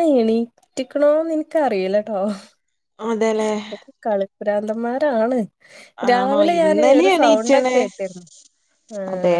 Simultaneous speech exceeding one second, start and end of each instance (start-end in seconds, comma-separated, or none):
6.1-7.8